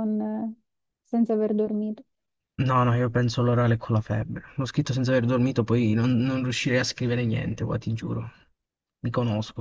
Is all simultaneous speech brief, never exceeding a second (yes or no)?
yes